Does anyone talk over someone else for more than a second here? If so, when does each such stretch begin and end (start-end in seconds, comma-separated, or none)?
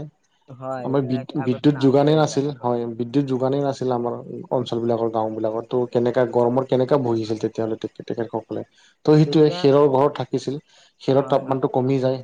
0.9-2.9